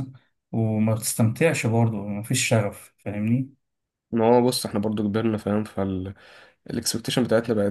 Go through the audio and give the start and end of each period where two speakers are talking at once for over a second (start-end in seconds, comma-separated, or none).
none